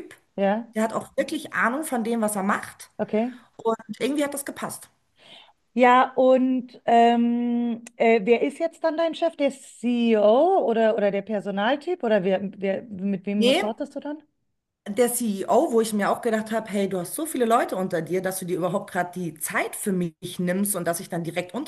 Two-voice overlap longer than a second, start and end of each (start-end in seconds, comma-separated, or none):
none